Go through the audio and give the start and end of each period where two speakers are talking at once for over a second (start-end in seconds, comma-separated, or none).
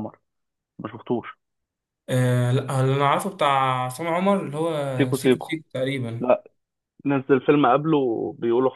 none